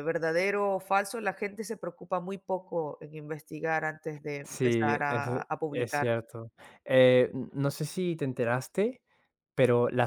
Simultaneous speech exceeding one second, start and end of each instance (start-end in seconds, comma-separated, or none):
4.4-6.1